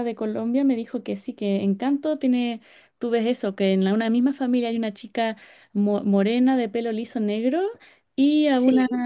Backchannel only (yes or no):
yes